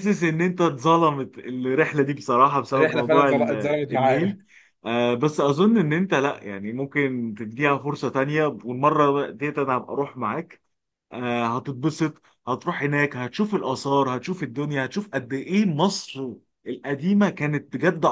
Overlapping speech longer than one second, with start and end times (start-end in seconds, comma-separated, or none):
2.7-4.4